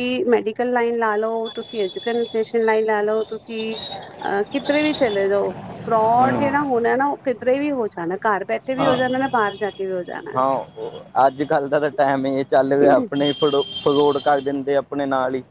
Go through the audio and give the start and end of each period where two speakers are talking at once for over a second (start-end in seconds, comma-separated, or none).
none